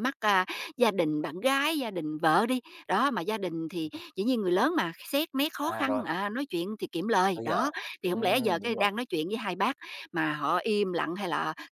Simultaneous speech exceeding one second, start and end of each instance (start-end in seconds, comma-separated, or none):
7.3-8.9